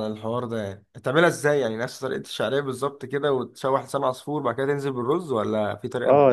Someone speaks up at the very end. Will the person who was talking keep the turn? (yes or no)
no